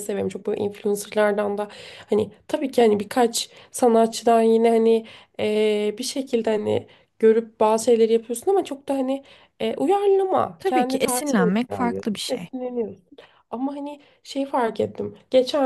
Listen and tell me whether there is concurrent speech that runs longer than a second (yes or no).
yes